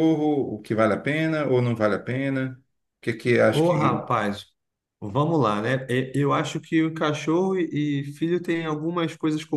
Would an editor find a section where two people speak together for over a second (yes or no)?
no